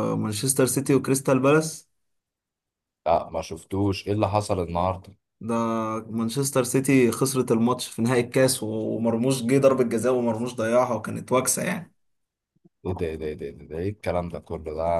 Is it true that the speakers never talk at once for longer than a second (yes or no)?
yes